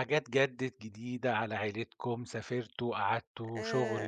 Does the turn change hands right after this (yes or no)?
no